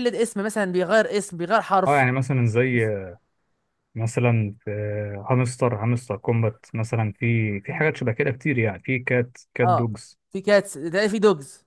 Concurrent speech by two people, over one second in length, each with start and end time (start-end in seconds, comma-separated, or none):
none